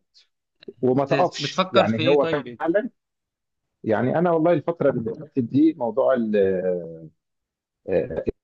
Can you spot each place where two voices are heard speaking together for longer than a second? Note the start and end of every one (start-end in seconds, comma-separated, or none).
1.1-2.6